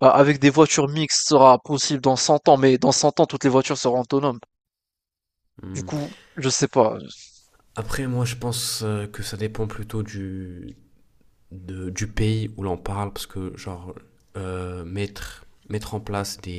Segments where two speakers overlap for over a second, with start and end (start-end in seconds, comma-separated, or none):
none